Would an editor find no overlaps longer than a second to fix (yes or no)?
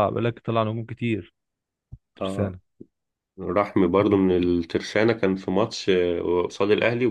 yes